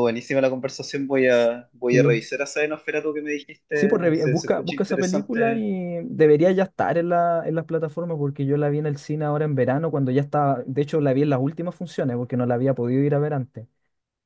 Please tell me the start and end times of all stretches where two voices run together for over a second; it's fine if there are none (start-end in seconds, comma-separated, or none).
3.8-5.7